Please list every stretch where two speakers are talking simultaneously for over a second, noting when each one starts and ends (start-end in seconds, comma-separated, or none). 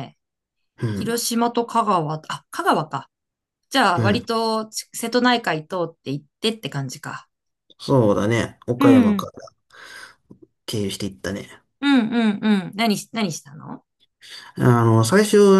none